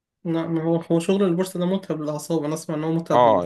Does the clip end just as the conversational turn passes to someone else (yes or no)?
yes